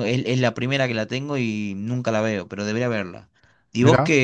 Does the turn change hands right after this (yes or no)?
no